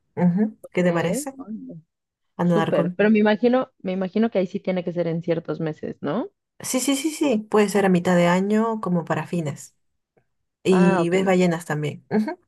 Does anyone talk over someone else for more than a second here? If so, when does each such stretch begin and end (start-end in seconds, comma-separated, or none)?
none